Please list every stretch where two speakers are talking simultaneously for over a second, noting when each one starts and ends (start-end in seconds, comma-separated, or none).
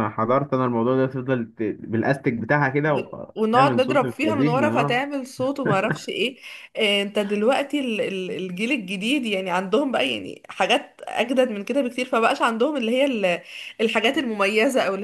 2.9-5.0